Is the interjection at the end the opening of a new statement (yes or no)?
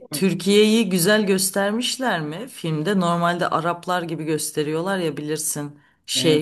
no